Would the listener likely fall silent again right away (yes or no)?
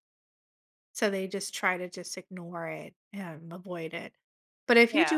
yes